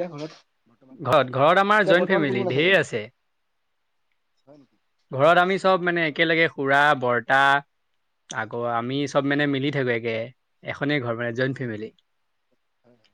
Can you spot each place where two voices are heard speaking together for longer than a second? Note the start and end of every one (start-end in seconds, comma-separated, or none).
1.0-2.7